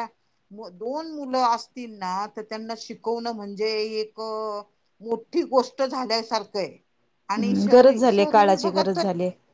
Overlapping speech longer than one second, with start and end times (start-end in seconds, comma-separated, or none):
7.4-9.0